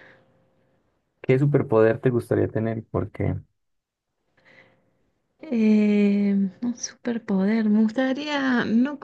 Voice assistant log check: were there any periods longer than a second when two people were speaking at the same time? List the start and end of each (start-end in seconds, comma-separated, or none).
none